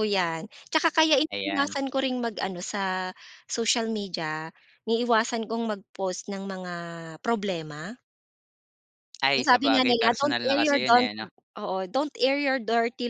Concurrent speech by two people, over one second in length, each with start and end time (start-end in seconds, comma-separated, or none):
9.3-11.1